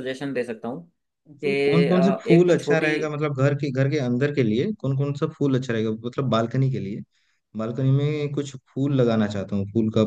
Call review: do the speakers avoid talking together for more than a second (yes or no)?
no